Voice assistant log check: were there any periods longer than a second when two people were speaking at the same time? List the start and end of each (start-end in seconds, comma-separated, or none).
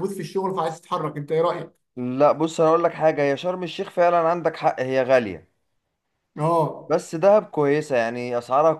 none